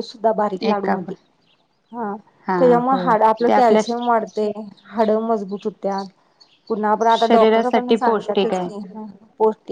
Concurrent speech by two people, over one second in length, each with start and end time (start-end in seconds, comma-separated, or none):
7.1-8.7